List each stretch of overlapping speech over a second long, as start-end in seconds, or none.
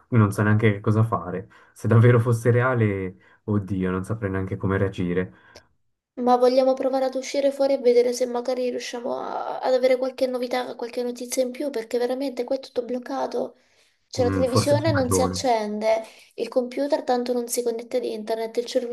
14.2-15.4